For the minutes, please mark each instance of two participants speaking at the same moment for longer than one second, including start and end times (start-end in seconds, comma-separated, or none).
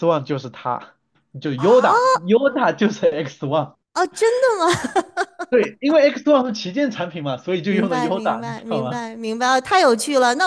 7.7-9.0